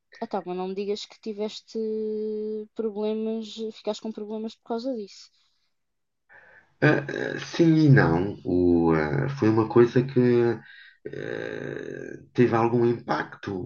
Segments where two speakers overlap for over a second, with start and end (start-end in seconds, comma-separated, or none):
none